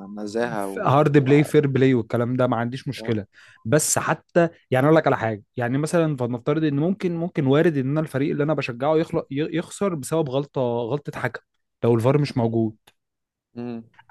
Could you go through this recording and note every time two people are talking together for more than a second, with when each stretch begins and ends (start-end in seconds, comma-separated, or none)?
none